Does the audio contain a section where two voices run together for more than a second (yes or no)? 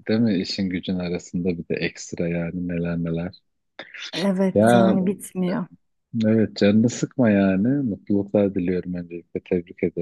no